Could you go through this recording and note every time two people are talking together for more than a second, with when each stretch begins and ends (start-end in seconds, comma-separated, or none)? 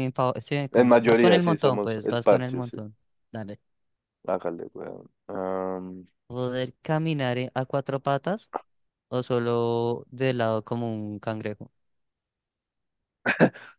0.7-2.8